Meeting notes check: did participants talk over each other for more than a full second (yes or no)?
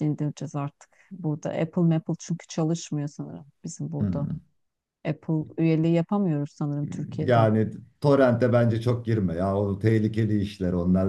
no